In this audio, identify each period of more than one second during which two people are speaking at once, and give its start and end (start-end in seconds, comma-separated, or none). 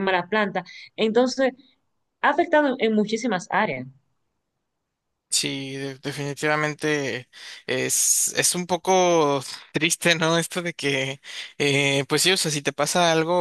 none